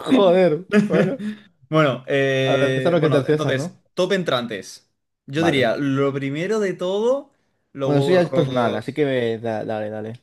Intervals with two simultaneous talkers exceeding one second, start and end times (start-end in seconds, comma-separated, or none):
2.4-3.8, 7.8-9.0